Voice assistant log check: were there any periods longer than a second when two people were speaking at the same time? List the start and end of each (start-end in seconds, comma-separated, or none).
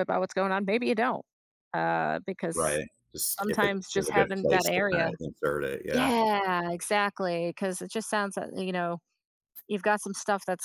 3.4-5.1